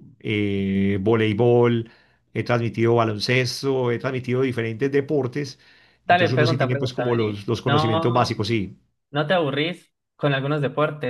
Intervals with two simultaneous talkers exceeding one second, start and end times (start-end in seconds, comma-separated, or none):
6.1-8.3